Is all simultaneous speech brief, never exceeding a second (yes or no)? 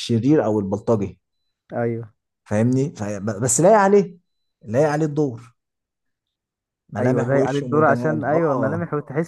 no